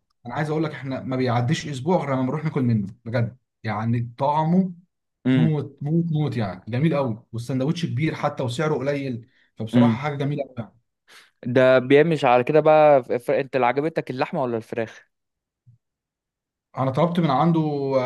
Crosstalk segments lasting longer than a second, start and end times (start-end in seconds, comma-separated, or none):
none